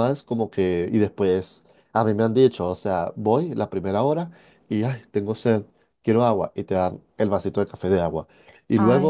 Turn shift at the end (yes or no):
no